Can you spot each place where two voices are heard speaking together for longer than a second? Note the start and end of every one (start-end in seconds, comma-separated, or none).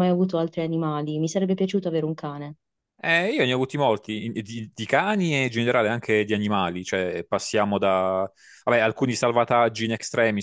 none